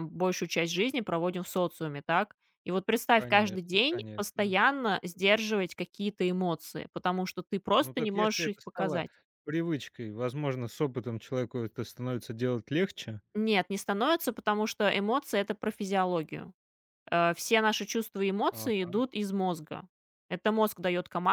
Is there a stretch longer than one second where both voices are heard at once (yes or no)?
yes